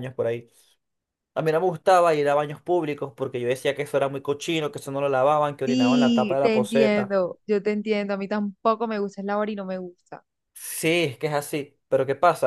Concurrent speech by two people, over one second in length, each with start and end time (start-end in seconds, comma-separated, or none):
5.6-7.1